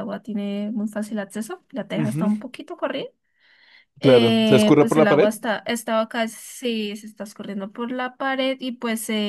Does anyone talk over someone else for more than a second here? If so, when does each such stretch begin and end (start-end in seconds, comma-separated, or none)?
4.0-5.3